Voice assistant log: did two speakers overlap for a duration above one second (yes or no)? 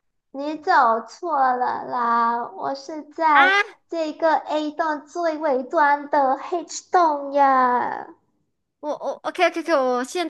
no